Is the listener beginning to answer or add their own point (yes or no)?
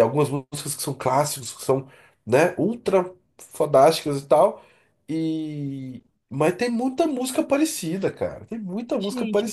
yes